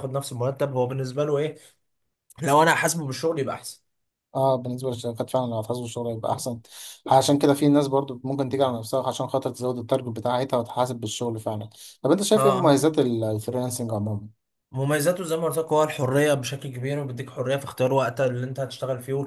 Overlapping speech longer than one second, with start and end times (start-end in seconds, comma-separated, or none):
none